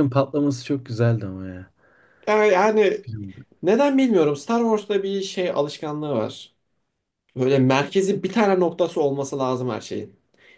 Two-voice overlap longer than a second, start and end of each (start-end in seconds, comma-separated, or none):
none